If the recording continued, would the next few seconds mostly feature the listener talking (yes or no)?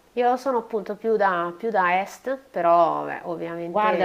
yes